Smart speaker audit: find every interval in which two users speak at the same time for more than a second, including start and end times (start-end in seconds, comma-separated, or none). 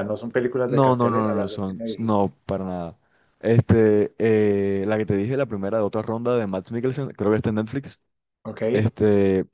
0.7-2.3